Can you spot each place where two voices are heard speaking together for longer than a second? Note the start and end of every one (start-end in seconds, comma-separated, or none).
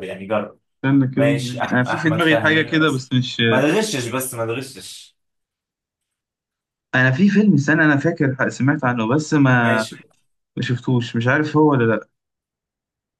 1.1-3.1